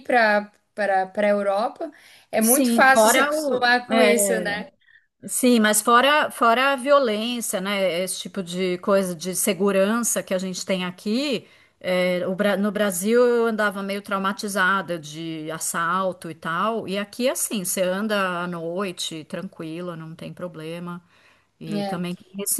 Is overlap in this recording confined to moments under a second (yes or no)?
no